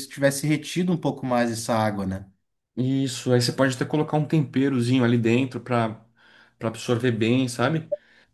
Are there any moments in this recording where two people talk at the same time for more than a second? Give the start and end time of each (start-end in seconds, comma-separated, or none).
none